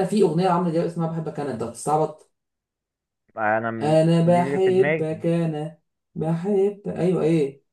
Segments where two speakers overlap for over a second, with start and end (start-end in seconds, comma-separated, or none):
3.8-5.1